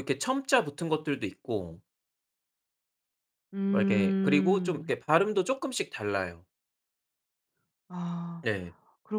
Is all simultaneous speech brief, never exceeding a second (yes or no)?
no